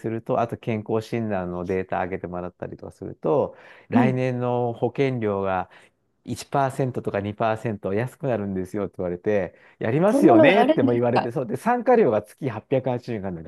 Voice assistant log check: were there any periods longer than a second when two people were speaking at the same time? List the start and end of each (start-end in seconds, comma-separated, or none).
10.1-11.3